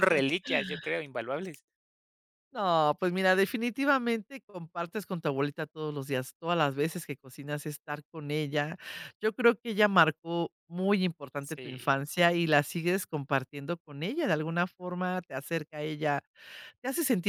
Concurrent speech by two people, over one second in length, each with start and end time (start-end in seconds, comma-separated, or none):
none